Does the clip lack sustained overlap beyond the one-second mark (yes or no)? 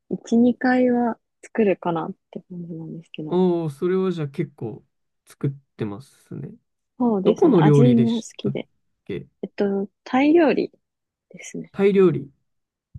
no